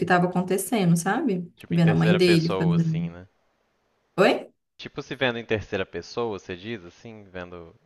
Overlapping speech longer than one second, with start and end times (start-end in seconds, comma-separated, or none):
1.6-3.1